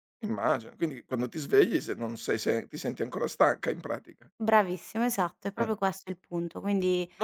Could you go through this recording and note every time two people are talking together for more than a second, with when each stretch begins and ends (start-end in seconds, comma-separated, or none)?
none